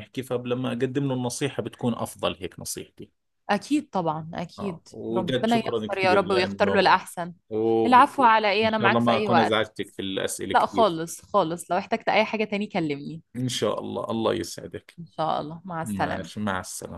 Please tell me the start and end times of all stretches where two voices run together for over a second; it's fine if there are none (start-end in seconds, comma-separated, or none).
4.6-7.0, 7.8-9.6